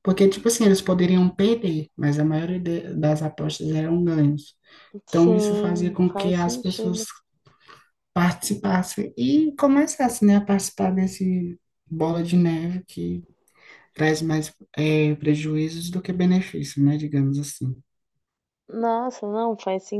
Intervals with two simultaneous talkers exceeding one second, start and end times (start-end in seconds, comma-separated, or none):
5.1-7.1